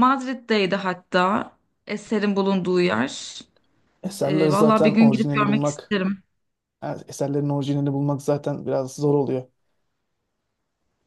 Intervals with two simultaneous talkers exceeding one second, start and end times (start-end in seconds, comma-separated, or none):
4.2-5.8